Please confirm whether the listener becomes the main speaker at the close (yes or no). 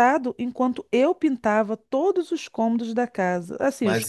yes